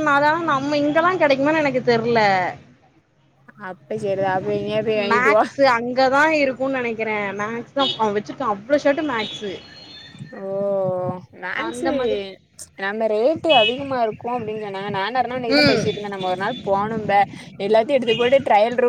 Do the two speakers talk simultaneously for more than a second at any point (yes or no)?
no